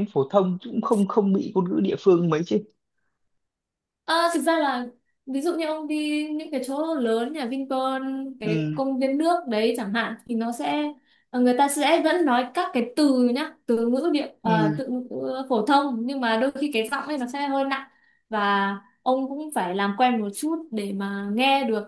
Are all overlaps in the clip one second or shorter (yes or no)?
yes